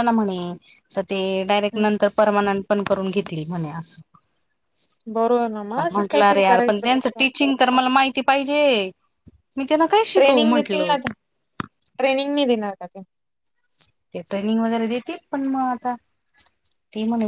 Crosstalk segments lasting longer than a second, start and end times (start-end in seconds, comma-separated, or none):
5.8-7.2